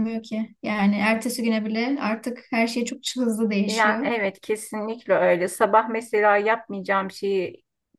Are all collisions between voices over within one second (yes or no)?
yes